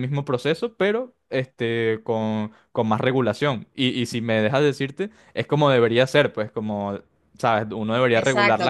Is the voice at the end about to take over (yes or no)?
yes